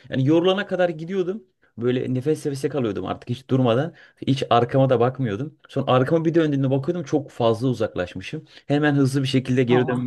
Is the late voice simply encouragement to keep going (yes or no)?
yes